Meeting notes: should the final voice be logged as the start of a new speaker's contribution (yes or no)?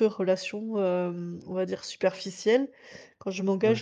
no